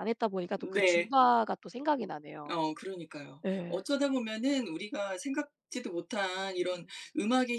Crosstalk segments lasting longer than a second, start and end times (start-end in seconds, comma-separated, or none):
none